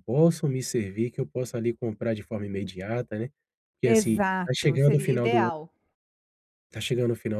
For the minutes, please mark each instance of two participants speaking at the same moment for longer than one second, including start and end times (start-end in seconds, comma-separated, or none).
3.8-5.5